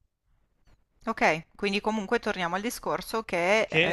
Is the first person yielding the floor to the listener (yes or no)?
yes